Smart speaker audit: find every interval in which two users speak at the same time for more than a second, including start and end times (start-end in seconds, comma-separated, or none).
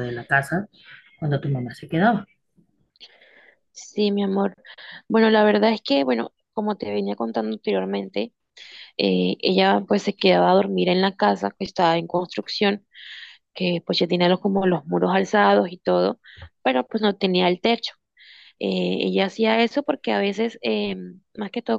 none